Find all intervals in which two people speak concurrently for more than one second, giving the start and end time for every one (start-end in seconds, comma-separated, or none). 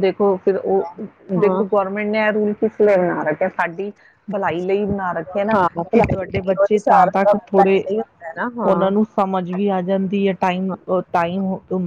5.5-7.8